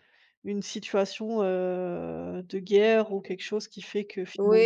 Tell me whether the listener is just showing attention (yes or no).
no